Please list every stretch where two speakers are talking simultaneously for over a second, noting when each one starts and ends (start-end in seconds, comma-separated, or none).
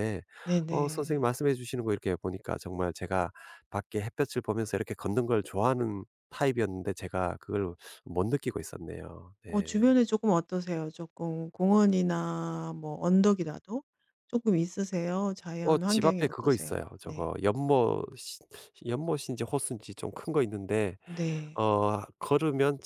15.6-17.3